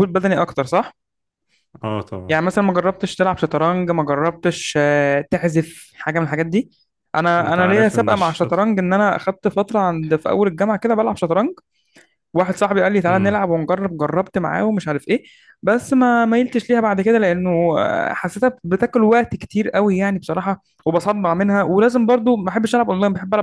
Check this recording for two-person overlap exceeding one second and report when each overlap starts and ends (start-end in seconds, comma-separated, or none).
7.4-8.7